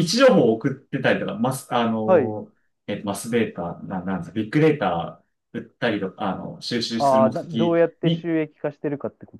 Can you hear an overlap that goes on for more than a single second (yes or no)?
yes